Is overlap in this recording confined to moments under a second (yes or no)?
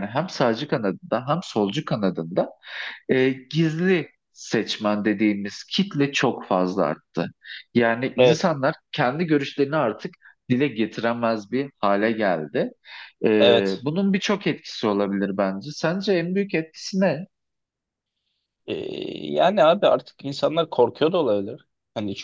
yes